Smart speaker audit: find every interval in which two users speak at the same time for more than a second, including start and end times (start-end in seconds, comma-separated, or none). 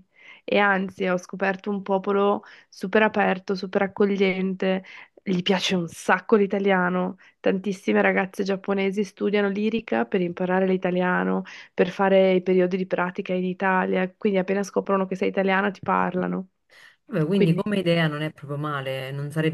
none